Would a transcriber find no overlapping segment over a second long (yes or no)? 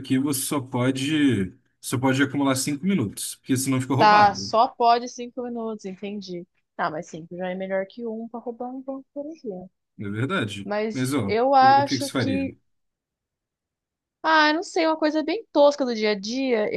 no